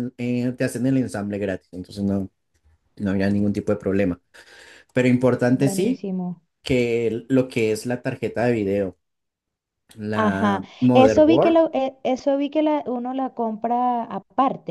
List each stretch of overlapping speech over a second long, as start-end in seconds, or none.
10.1-11.6